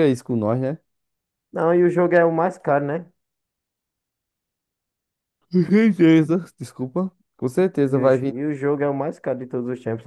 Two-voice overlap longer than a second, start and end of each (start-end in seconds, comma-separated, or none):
none